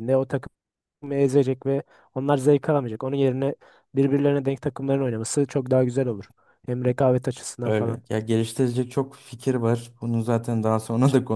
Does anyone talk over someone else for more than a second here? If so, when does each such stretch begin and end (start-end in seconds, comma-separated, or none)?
none